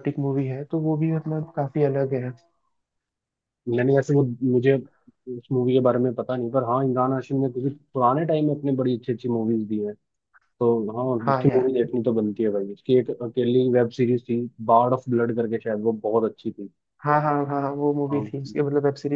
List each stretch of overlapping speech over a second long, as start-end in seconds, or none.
none